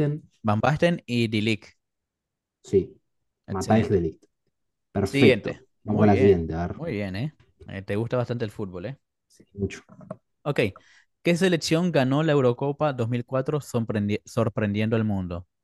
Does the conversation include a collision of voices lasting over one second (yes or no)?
yes